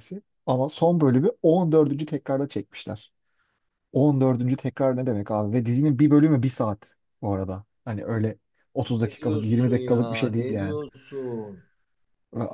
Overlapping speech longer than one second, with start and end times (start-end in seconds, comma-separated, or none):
9.0-10.8